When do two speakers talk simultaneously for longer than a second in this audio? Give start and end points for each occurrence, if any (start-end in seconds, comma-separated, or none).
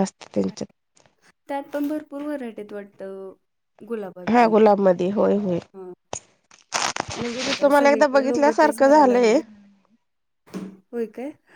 7.5-9.3